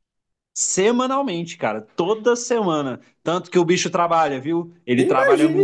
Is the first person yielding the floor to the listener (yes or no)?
yes